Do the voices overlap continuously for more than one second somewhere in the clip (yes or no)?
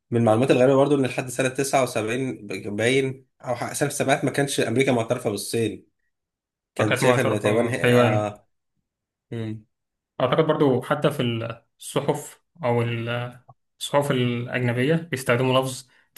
yes